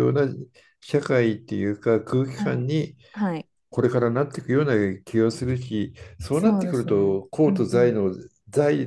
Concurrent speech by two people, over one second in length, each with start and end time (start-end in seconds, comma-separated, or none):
6.3-8.0